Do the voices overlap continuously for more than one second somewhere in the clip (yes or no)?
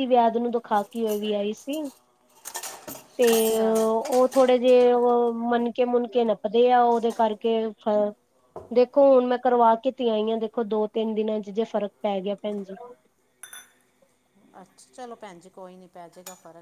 no